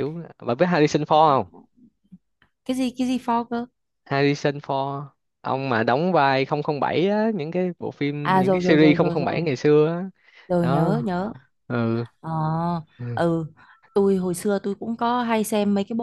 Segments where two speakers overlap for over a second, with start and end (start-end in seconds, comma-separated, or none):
8.2-9.4